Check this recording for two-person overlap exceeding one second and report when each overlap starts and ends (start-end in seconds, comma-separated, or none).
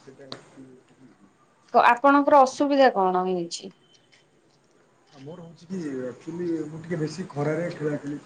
none